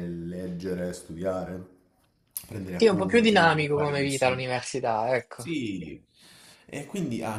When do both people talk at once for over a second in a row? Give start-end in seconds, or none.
2.7-4.4